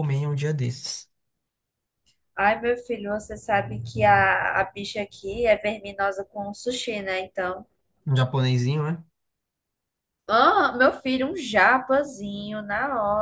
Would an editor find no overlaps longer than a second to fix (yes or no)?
yes